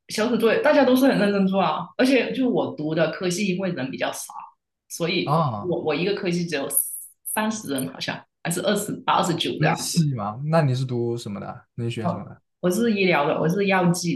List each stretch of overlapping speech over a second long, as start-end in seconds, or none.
none